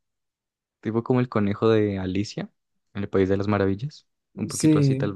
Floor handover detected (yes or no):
yes